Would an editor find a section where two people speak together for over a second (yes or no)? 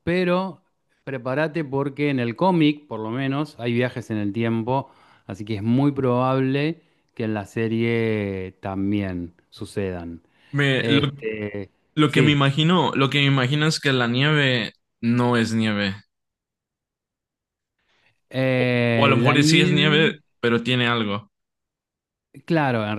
yes